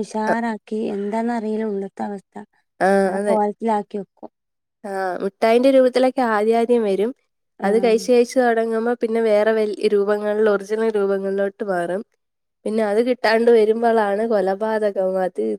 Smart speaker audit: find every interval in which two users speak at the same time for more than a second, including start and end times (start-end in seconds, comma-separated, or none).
none